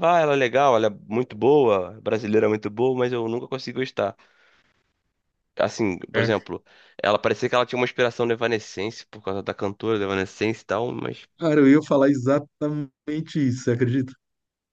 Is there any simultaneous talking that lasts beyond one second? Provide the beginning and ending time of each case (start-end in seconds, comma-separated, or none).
none